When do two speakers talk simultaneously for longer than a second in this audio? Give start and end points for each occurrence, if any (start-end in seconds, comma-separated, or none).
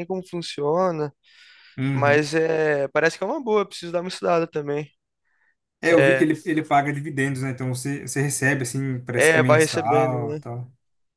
9.2-10.4